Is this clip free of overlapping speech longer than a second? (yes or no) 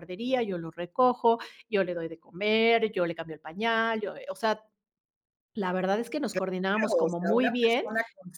no